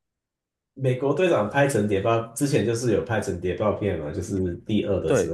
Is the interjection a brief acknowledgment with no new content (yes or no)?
no